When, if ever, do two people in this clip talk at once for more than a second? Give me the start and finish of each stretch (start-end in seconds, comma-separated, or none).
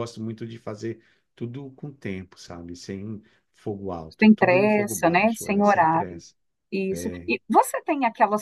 4.2-6.2